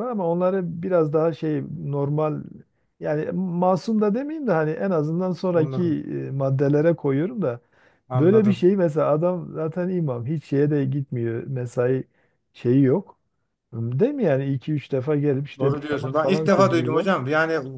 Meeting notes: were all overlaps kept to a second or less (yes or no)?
no